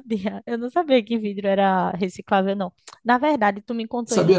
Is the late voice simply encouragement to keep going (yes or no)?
yes